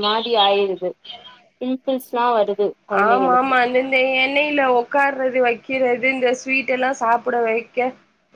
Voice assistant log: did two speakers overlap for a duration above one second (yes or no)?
no